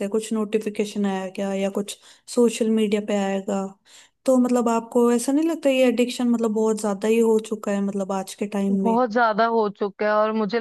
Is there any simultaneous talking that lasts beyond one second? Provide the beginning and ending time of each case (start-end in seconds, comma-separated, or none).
none